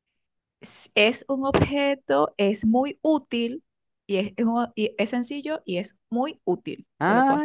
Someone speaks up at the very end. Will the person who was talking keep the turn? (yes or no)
no